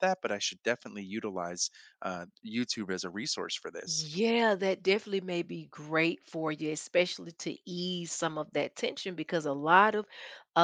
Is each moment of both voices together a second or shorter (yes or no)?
yes